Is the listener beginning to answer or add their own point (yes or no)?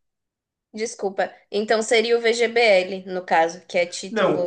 yes